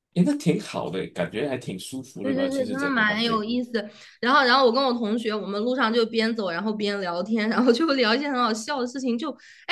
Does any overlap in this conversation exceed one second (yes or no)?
yes